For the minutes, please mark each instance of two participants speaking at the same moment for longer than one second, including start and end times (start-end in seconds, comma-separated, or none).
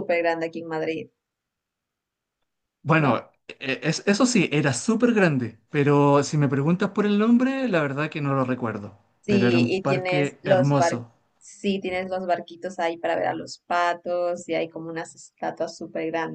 9.2-11.0